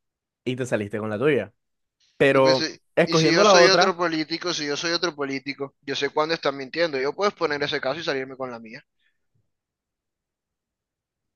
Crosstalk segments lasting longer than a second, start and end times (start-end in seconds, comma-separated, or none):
2.3-4.0